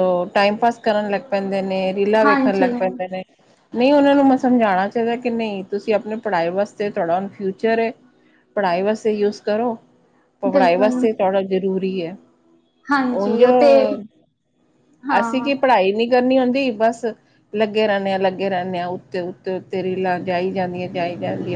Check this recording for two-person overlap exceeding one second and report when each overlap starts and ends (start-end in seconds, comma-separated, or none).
none